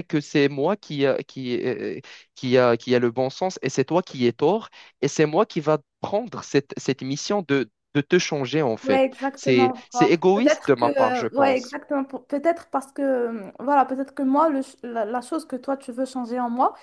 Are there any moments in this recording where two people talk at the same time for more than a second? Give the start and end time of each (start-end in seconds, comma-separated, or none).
8.8-11.8